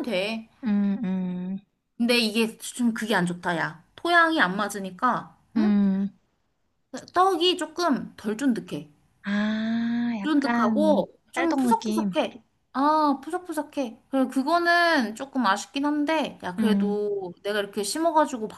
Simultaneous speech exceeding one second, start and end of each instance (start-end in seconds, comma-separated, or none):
10.2-12.1